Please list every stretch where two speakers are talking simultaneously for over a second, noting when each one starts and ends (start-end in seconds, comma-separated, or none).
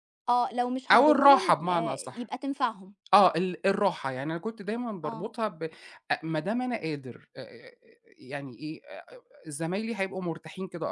0.9-2.3